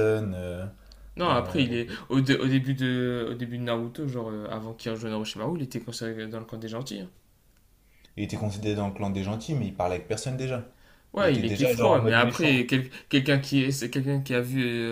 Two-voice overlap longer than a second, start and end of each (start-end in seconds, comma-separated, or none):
11.2-12.7